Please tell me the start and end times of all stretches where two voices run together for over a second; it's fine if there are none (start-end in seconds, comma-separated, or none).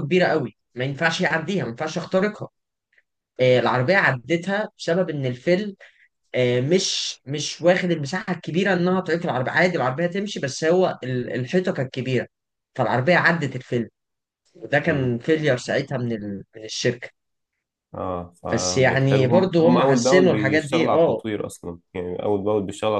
18.5-21.2